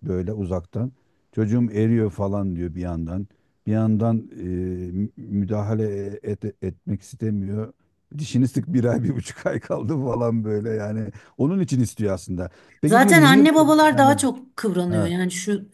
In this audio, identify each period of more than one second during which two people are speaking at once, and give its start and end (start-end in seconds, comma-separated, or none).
12.8-14.2